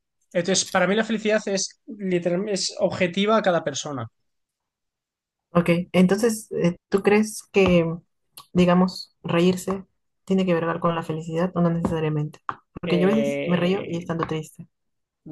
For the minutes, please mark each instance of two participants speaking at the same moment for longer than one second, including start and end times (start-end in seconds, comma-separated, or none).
12.8-14.1